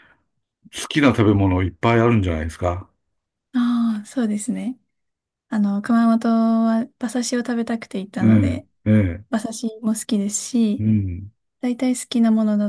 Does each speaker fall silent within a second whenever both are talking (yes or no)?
yes